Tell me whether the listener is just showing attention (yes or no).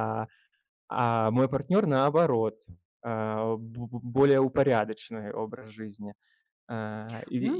yes